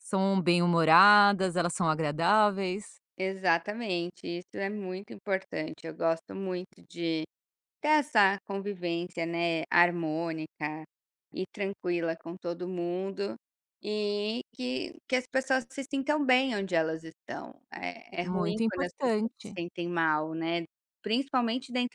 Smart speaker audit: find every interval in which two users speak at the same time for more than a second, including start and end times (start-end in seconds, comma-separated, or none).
18.2-19.6